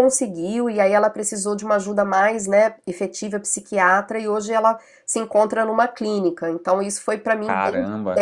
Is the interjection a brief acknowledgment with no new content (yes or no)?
yes